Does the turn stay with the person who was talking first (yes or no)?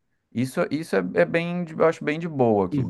no